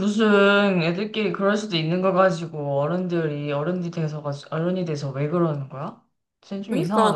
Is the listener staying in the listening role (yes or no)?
no